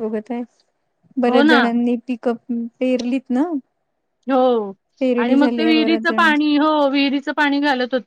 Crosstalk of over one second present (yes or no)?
yes